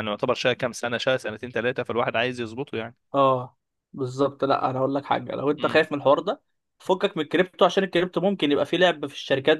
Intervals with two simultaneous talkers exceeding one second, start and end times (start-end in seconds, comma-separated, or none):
none